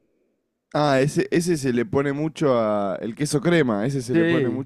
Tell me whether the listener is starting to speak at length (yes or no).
no